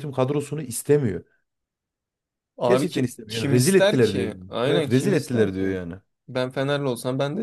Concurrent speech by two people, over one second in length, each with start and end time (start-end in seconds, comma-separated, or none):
2.6-5.7